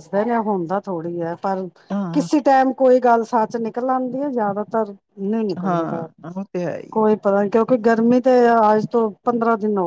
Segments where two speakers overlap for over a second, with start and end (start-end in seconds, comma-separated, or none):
none